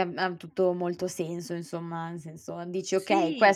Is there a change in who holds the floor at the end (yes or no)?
no